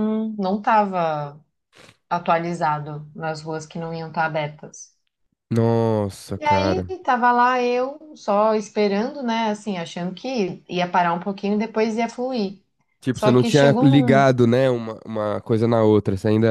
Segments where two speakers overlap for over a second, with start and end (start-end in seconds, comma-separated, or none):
13.1-14.3